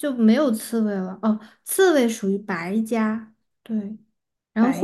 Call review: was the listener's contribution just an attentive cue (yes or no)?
yes